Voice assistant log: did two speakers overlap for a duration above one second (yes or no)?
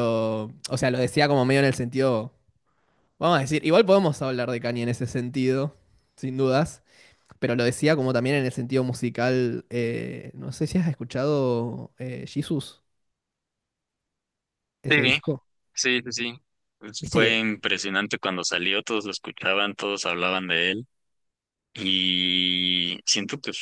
no